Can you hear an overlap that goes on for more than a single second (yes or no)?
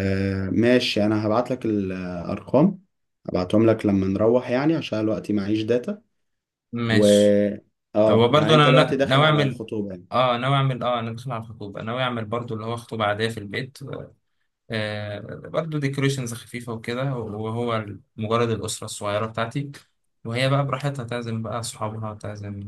yes